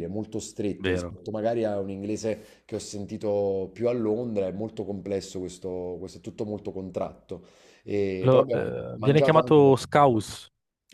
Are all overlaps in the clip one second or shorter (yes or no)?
no